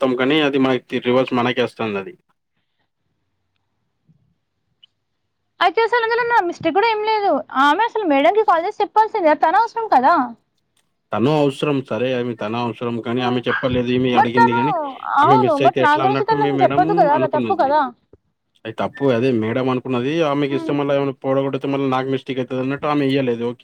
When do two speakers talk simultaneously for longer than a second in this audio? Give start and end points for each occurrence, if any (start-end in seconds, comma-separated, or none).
15.2-17.6